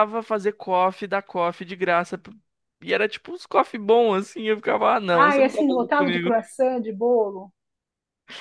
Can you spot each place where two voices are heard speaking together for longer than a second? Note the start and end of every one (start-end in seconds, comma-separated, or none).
5.1-6.4